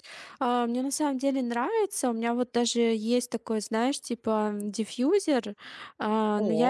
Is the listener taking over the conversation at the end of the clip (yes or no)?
no